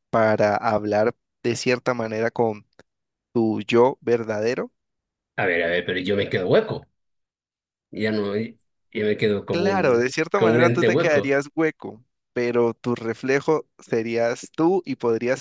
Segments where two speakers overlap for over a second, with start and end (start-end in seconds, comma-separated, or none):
9.5-11.4